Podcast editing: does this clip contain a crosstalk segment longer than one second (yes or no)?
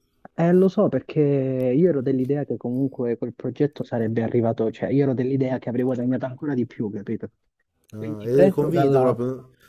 yes